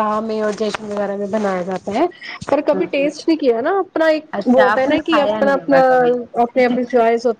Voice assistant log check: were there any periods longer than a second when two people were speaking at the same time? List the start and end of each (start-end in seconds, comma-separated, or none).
4.4-5.8